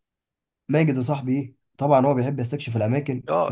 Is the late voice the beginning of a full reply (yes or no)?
yes